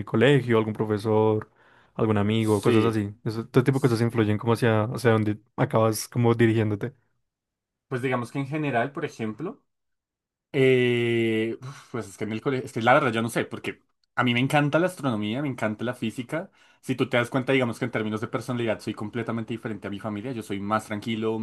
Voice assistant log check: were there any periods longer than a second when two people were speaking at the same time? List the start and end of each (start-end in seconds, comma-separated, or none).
none